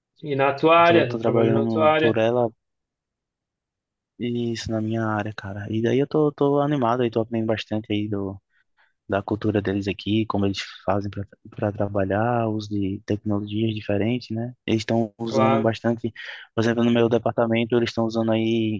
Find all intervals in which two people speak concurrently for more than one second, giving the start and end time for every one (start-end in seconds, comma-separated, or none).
0.8-2.2